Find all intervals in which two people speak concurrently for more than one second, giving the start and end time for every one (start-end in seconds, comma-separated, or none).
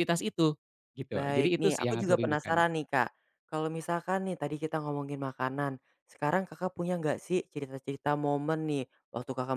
1.1-2.6